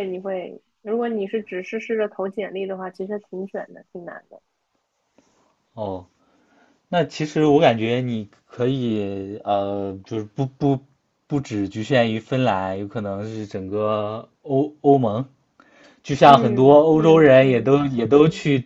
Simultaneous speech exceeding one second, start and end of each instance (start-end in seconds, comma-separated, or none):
16.2-17.7